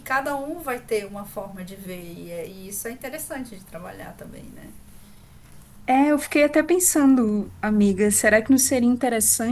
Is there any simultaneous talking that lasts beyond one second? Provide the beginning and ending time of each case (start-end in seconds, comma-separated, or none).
none